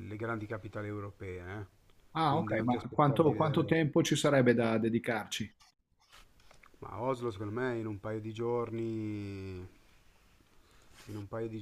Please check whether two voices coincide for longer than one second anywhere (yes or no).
yes